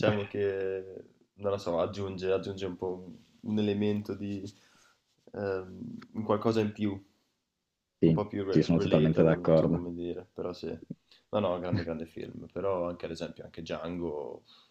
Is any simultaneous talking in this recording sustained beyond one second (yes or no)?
yes